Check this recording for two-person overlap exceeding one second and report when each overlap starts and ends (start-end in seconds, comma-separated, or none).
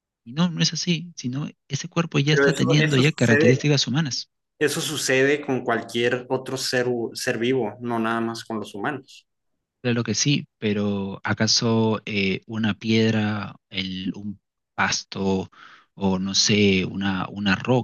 2.3-3.7